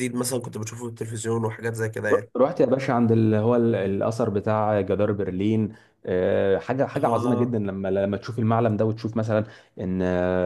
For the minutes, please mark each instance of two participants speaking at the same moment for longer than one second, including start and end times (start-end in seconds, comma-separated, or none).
none